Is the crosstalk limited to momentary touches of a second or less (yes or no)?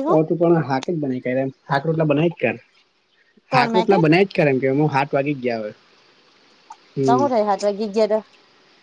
yes